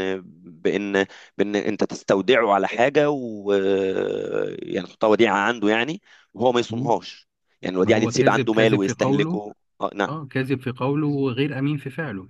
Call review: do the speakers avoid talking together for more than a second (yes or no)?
no